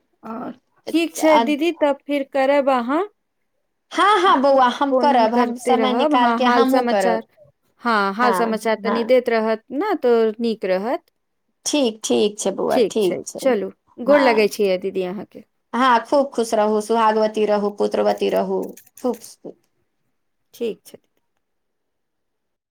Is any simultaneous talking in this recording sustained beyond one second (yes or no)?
yes